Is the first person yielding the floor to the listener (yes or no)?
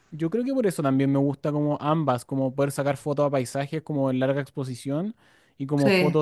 no